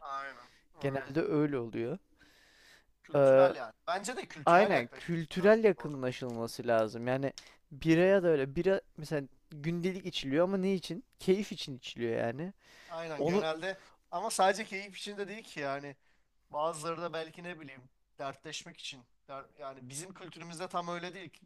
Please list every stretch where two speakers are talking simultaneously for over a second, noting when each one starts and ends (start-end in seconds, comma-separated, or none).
4.5-6.1